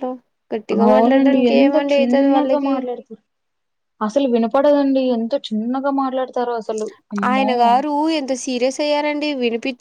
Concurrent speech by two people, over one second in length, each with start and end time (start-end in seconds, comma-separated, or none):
0.9-2.7